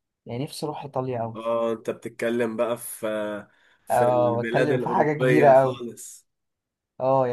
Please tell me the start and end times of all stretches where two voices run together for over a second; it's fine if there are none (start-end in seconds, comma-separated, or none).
3.9-5.8